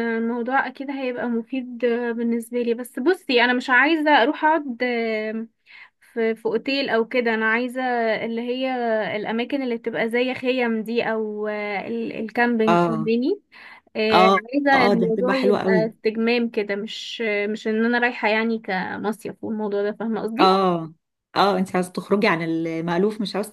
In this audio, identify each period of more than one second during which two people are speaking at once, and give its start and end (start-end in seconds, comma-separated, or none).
14.1-15.9